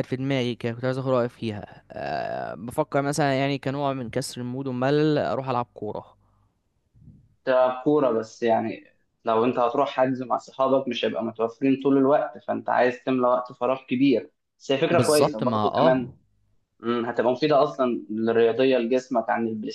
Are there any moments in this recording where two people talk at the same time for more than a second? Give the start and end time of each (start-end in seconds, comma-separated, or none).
14.9-16.1